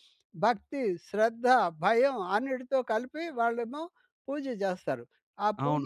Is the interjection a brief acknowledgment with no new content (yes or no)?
no